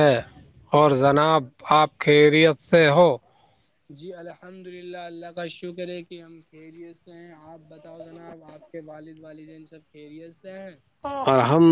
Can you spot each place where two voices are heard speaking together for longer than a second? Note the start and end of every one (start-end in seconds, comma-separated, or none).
none